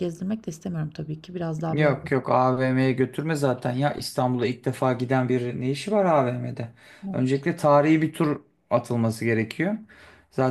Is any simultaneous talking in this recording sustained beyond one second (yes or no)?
no